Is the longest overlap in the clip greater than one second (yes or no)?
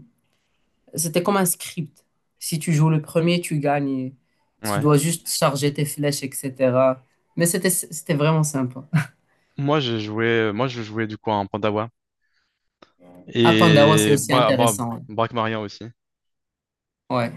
yes